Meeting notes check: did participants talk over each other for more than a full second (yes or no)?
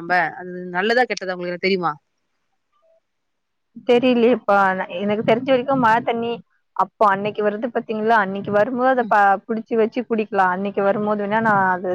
no